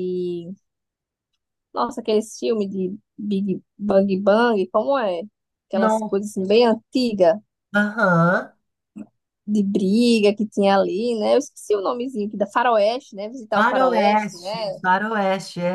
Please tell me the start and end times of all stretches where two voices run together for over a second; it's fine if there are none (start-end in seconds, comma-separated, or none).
13.5-14.8